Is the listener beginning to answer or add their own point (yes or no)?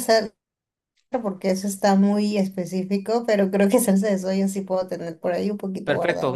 yes